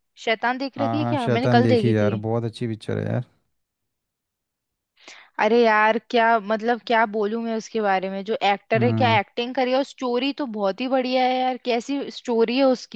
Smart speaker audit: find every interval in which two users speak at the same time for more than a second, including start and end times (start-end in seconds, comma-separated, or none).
0.8-2.1